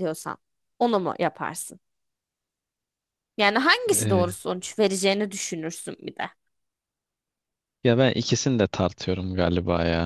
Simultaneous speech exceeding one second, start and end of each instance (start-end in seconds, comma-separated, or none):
none